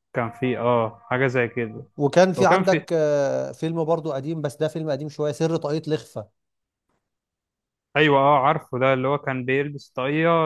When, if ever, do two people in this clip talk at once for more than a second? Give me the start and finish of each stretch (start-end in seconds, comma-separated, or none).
none